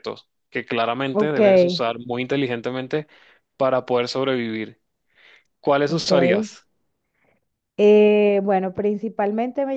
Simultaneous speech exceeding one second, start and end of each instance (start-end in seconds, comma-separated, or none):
none